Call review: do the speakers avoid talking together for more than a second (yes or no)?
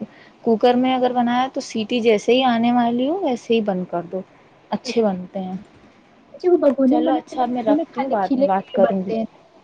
no